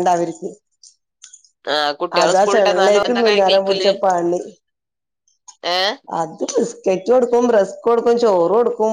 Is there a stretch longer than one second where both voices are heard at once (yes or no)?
yes